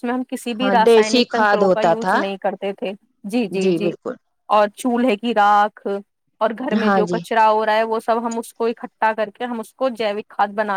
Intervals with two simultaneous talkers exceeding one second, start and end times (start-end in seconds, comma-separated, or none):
0.6-2.2